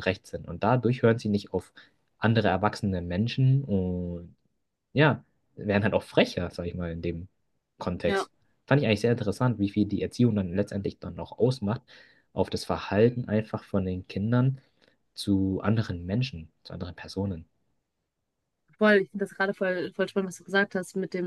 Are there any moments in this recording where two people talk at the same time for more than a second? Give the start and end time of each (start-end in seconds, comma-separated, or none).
none